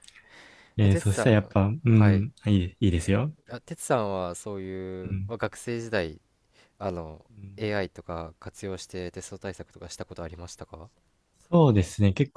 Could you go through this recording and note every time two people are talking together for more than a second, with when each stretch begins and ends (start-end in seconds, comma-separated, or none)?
0.8-2.3